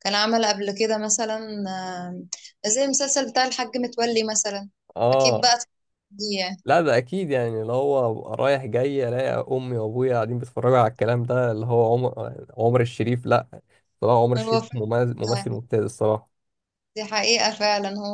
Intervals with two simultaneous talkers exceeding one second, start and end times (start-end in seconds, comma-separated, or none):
14.4-15.6